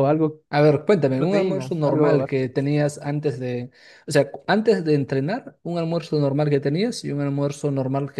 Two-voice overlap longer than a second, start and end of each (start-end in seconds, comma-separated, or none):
1.0-2.5